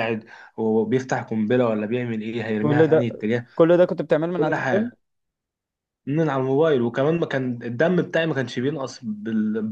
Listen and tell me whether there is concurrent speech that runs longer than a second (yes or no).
no